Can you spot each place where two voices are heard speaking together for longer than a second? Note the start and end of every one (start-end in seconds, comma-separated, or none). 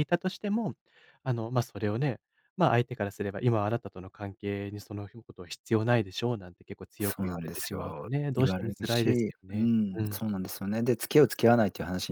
7.0-10.2